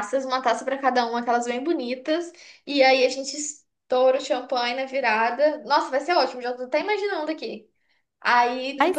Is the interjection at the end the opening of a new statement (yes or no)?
no